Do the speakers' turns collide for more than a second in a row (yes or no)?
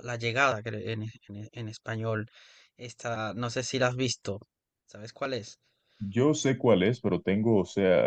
no